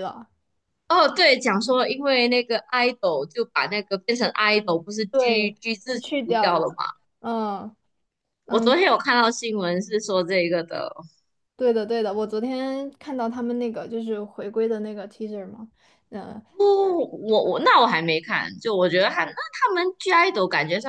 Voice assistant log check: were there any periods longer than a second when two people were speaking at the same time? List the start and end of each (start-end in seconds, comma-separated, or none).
5.1-6.7